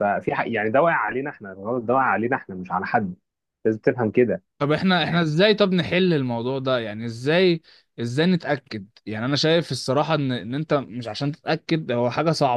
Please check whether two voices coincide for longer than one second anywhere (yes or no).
no